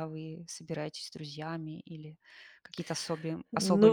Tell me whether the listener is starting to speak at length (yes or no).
yes